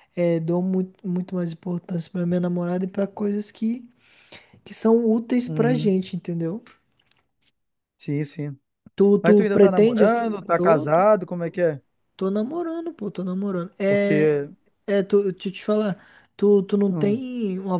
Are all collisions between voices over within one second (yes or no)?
no